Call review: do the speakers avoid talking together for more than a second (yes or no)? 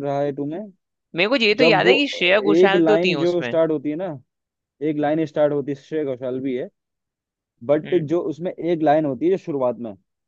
no